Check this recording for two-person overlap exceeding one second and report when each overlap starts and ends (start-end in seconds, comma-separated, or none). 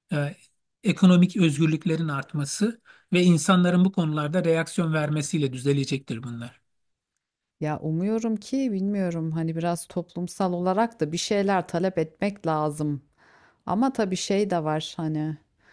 none